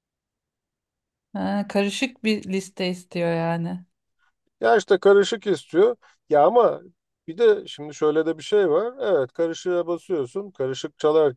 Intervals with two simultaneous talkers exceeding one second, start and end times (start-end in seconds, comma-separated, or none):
none